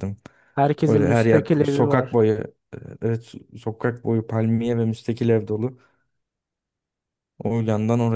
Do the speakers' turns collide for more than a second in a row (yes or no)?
yes